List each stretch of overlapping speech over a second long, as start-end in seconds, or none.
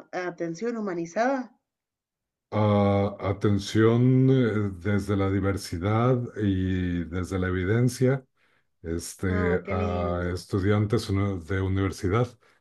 9.3-10.5